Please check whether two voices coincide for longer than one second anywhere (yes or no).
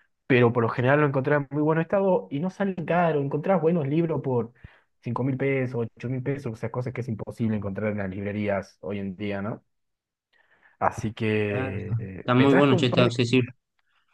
yes